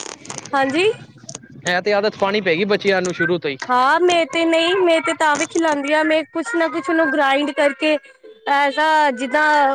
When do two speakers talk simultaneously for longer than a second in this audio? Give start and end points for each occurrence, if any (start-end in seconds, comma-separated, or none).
none